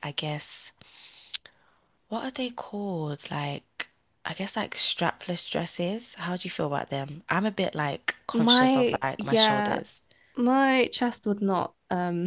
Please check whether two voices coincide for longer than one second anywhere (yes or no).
yes